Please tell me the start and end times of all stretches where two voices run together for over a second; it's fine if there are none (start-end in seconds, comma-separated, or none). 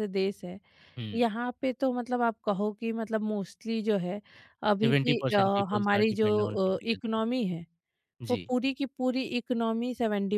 4.8-7.2